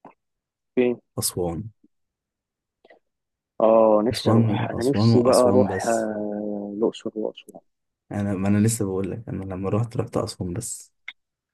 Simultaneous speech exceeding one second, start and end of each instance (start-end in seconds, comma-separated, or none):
4.1-6.1